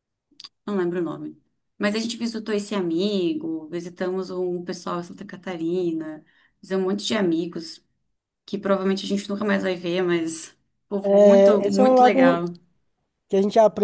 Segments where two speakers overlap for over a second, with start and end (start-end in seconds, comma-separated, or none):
11.0-12.4